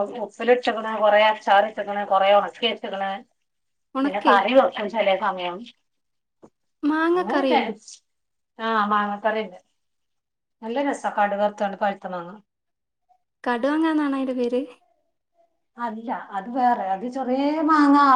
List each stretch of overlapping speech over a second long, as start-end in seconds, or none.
none